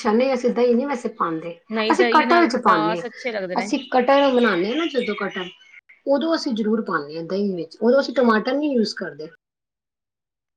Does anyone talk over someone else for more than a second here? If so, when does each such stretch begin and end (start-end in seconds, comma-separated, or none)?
1.8-3.7